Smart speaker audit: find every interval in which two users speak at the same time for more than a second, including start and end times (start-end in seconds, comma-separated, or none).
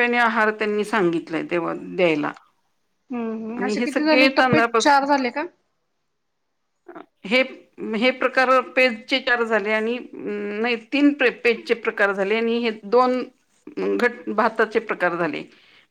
3.6-5.1